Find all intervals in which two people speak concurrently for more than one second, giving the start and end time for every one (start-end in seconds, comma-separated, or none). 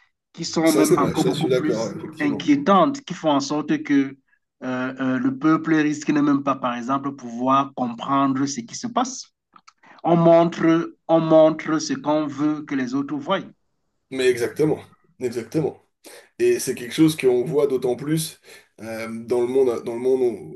0.6-2.5